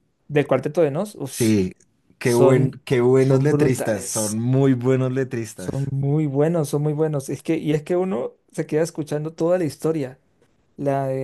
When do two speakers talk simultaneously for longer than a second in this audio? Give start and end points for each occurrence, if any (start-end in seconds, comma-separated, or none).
2.2-4.4